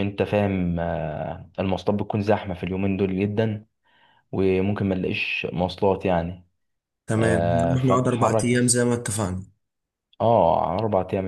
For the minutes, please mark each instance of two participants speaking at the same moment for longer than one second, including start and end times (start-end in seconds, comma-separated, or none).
7.2-8.8